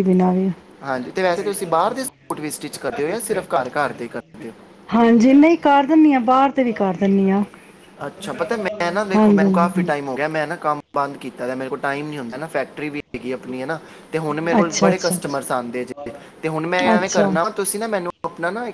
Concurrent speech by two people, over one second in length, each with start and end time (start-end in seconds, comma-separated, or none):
none